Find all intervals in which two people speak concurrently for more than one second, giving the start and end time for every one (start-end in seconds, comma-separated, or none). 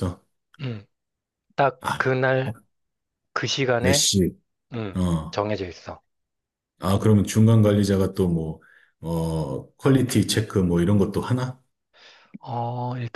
none